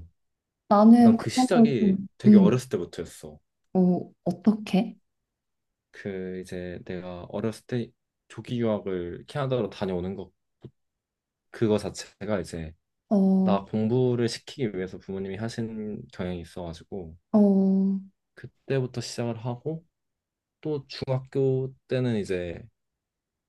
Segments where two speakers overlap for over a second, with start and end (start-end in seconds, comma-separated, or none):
1.0-2.6